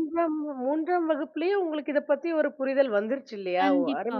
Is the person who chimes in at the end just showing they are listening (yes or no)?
no